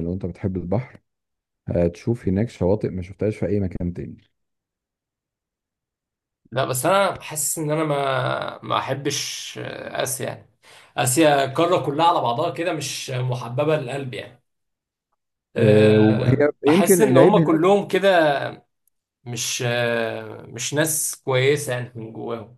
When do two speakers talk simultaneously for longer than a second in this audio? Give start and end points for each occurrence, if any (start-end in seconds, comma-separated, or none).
15.6-17.6